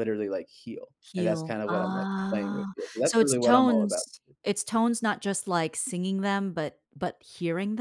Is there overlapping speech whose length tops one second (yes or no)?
yes